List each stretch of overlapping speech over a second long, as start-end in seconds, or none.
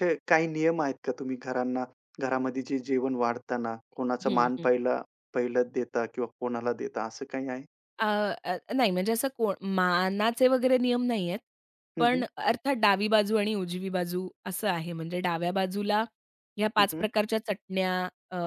none